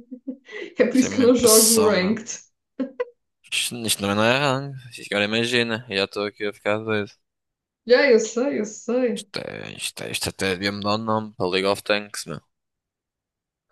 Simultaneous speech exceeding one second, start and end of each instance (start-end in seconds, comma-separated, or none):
0.9-2.2